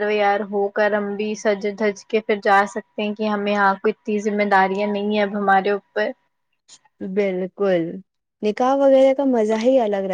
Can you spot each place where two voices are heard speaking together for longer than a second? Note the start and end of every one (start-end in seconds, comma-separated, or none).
none